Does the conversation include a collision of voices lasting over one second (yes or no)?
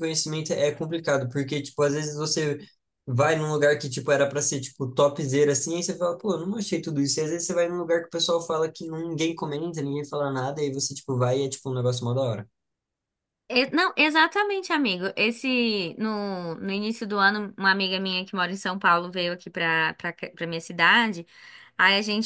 no